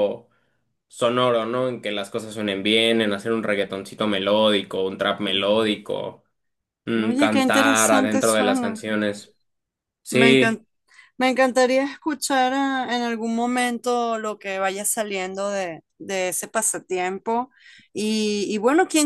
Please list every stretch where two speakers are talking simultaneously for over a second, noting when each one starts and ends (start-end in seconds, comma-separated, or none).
7.0-8.8